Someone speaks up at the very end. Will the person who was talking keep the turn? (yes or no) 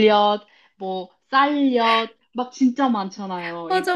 no